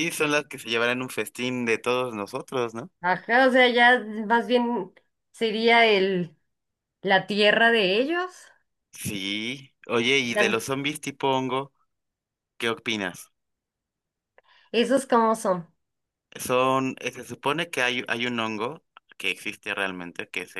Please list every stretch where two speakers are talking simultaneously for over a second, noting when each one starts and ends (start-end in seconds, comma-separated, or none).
none